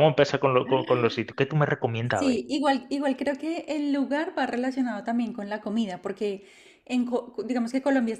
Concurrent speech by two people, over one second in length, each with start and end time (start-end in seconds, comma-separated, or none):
none